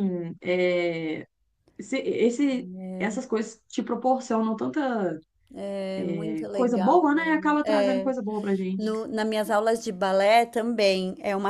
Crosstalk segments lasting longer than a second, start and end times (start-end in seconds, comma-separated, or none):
6.5-8.1